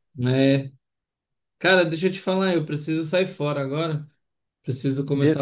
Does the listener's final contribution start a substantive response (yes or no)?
no